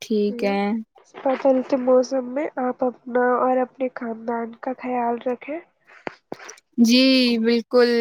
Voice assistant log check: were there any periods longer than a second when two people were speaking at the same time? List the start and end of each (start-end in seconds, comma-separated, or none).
none